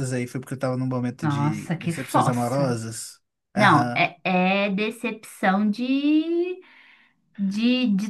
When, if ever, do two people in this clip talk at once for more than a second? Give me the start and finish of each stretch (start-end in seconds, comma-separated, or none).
1.2-2.8